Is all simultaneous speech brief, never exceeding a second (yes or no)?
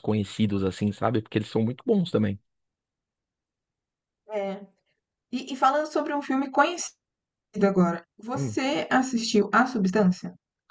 yes